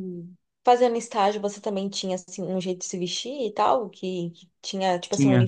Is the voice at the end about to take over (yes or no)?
no